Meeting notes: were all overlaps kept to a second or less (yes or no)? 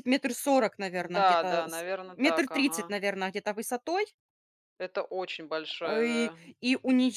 no